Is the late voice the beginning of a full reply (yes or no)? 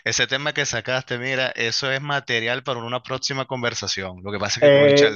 no